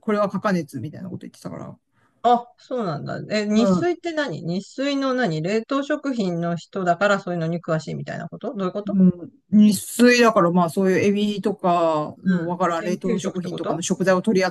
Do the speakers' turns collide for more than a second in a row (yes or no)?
yes